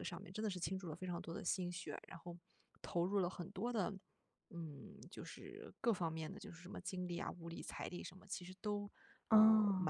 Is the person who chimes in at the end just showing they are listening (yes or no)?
yes